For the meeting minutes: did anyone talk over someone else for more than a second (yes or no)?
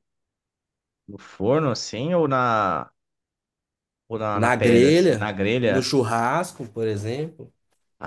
yes